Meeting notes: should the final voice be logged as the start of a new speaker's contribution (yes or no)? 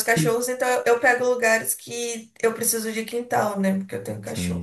yes